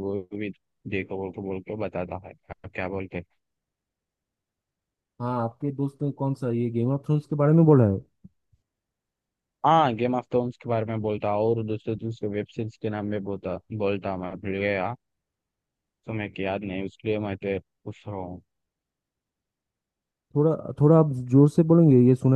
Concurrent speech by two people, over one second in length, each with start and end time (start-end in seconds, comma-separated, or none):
none